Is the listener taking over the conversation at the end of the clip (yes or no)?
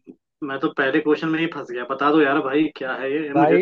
yes